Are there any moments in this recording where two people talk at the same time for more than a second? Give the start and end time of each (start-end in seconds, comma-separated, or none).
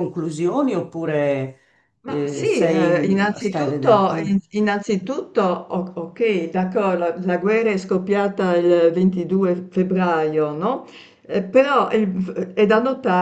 2.0-4.3